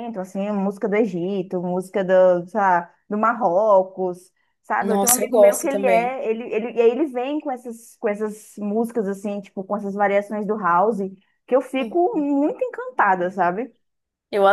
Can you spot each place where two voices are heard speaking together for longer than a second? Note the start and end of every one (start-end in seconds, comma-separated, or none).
4.8-6.2